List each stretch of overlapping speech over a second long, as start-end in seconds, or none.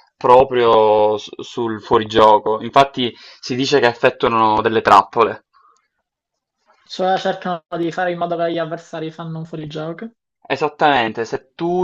none